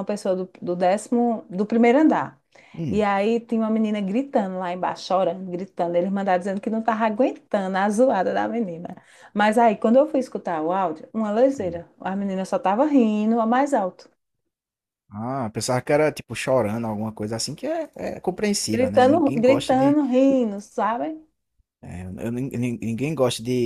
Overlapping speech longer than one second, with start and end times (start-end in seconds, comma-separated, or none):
18.7-20.0